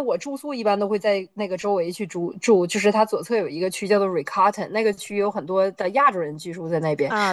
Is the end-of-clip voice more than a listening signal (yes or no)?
no